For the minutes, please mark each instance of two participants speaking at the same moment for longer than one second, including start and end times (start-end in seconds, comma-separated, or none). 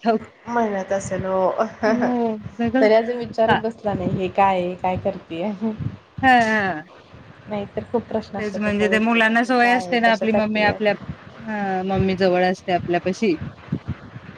9.6-10.9